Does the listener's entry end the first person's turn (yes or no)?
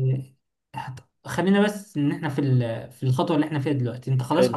no